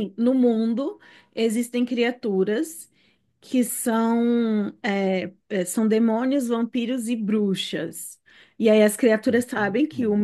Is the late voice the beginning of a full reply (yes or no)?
no